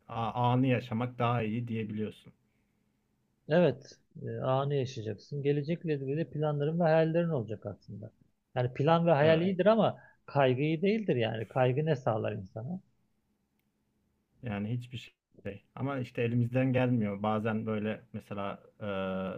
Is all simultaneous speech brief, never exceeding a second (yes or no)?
yes